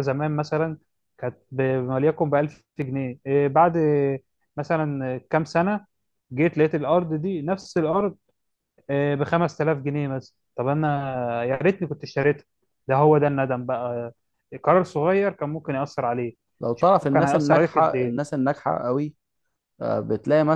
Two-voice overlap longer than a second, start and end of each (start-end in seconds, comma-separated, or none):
16.7-18.2